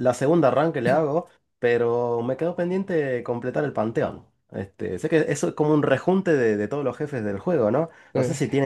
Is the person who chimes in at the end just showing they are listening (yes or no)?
yes